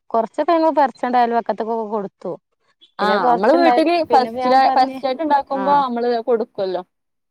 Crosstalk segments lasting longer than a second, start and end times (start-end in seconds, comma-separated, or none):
3.0-5.0